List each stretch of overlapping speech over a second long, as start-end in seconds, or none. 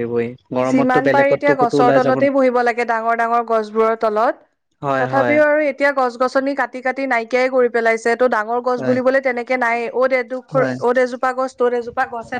0.7-2.2